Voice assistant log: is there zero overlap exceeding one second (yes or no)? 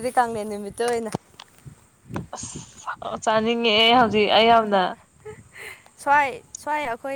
yes